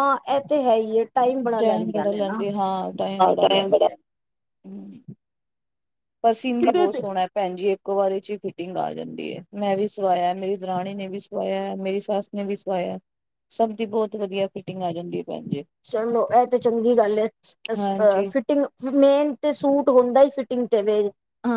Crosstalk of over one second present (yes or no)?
no